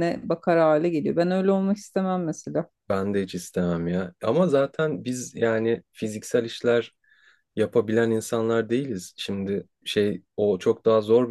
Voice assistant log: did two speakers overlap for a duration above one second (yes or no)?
no